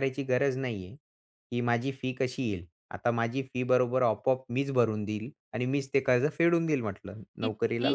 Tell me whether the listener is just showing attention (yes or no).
no